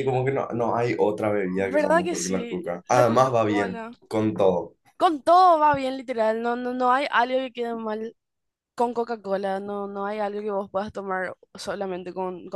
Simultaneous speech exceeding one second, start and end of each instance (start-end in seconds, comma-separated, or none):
1.7-4.0